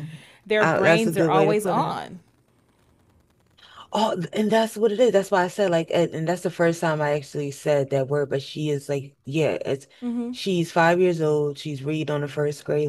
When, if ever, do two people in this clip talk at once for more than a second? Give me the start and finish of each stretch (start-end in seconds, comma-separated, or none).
0.6-2.0